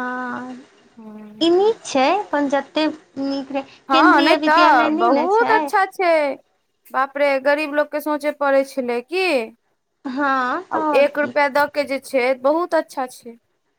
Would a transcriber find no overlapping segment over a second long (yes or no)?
no